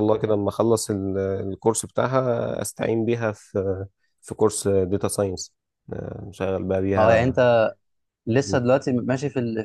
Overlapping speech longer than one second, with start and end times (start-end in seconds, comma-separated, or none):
none